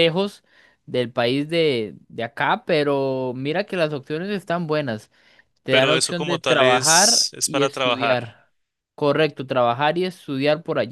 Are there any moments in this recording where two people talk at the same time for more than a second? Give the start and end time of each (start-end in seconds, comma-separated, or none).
5.7-8.2